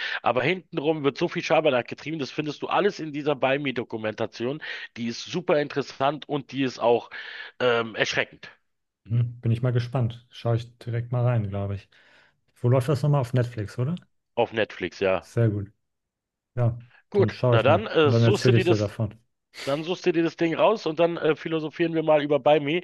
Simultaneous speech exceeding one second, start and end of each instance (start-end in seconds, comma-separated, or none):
17.1-18.9